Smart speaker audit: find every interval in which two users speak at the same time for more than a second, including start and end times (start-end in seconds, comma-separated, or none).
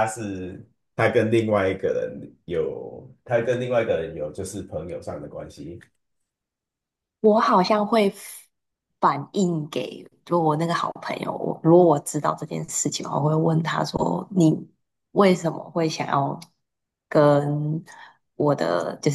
none